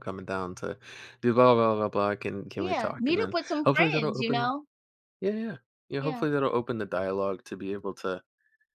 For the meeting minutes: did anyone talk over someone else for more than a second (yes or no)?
yes